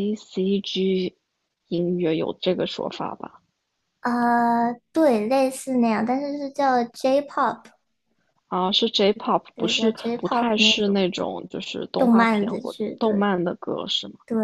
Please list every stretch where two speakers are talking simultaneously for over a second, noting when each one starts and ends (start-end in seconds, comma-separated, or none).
9.6-11.1, 12.0-13.3